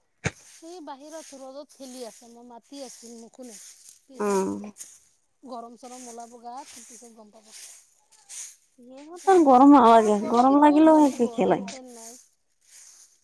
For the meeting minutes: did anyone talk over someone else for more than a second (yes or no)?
yes